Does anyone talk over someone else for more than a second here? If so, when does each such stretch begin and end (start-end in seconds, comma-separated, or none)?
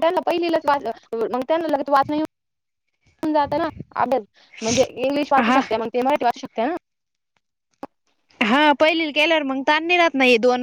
none